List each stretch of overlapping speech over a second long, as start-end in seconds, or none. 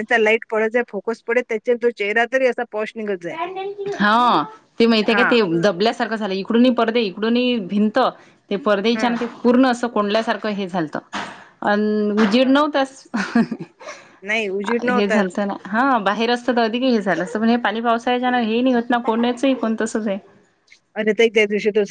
none